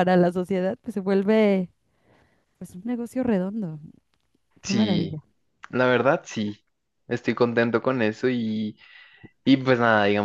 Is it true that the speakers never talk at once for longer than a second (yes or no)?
yes